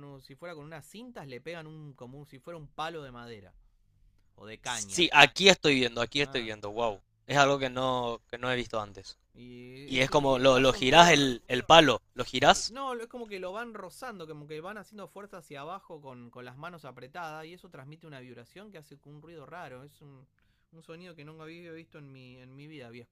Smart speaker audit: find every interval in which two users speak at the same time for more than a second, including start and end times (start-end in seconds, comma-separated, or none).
9.8-11.1